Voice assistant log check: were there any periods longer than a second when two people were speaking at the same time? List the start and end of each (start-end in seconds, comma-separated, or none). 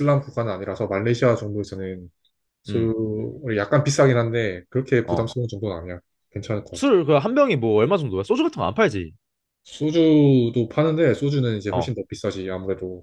none